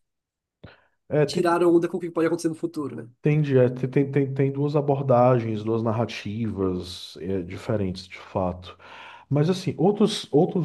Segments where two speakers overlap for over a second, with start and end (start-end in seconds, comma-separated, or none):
none